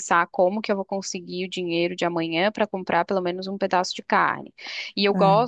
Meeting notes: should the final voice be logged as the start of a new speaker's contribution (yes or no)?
no